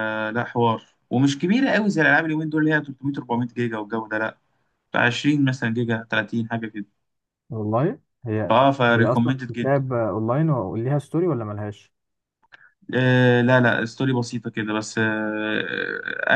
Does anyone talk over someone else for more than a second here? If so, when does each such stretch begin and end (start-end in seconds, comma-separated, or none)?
8.5-9.9